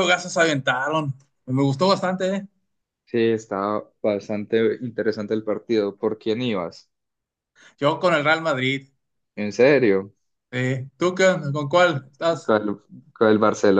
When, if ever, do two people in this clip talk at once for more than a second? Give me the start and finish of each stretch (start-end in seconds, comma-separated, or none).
none